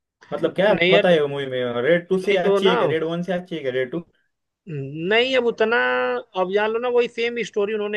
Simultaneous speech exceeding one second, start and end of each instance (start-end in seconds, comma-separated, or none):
none